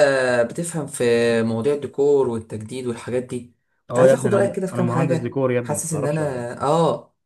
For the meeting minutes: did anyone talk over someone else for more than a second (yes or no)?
yes